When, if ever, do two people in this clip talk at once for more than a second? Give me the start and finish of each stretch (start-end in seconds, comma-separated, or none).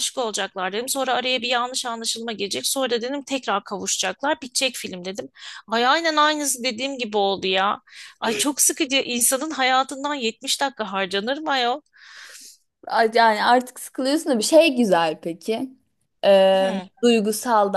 none